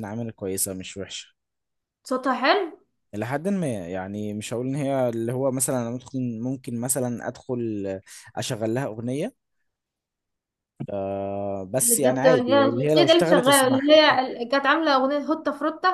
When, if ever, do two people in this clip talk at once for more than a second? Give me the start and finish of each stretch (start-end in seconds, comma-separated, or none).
11.8-13.9